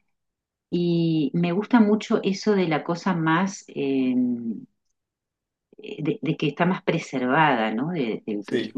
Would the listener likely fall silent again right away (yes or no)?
yes